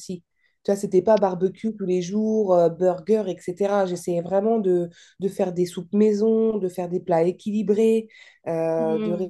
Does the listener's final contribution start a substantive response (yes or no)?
yes